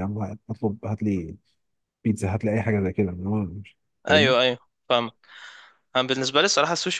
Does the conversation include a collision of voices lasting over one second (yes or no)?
no